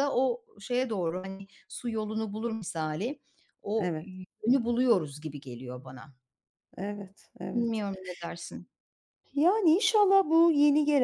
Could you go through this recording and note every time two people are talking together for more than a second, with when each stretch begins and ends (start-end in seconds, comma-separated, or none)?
none